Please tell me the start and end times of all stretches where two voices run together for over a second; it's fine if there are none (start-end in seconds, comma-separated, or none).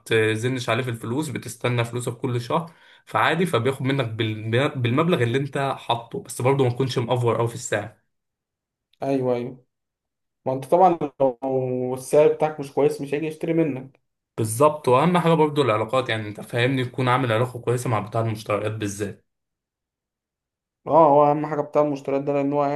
none